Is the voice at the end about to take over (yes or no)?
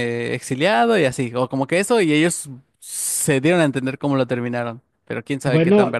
yes